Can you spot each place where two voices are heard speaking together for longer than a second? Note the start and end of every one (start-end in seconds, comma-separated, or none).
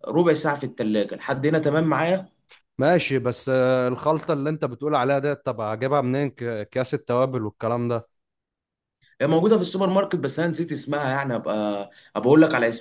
none